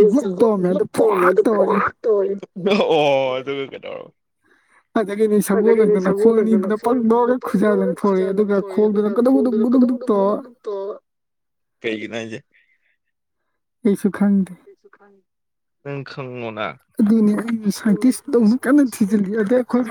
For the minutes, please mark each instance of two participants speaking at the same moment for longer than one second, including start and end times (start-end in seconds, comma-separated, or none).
5.6-10.4